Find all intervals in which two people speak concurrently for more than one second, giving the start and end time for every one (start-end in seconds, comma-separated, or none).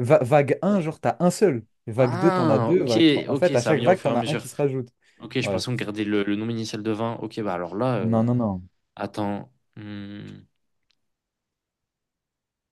2.0-4.5